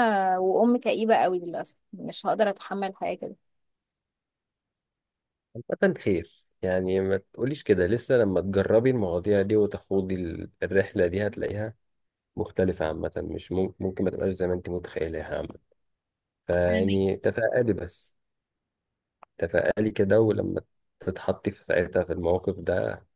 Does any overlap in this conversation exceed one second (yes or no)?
no